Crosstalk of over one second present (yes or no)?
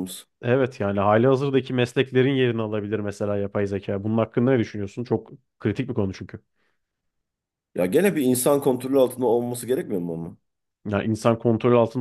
no